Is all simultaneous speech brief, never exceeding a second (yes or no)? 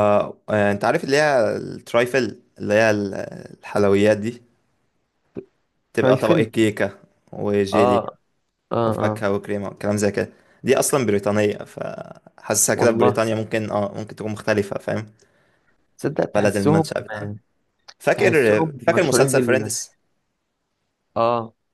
no